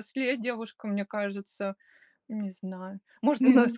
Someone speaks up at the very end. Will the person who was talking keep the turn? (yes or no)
yes